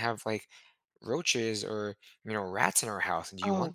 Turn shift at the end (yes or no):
yes